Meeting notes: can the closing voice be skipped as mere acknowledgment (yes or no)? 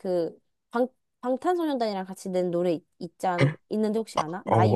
no